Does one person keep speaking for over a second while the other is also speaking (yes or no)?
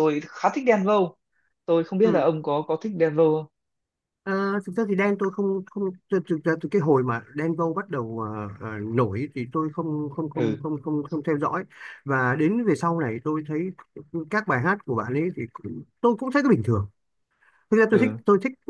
no